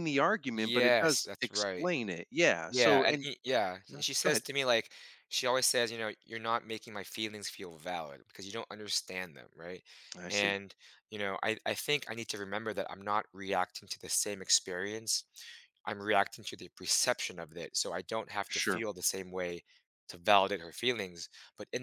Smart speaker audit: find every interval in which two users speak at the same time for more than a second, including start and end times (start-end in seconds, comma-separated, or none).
0.5-1.9